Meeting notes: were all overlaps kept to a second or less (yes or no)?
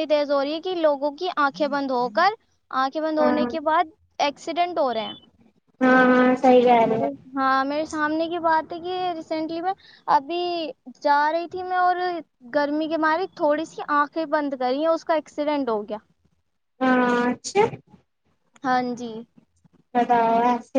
yes